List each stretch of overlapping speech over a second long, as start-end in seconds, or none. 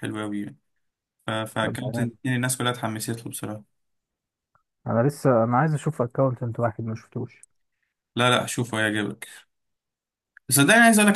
none